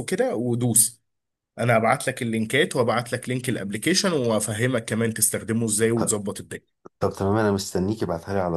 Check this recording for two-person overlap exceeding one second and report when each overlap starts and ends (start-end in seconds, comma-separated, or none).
none